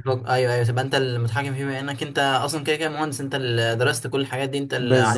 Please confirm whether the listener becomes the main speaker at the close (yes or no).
yes